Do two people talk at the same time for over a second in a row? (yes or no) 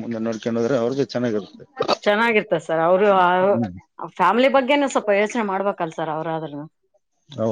no